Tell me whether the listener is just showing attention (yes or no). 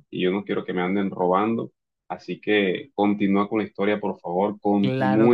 no